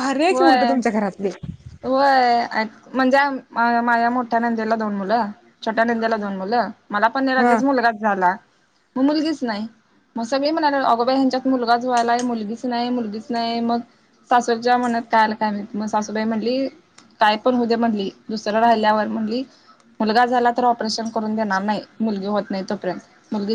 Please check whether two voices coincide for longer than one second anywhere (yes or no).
no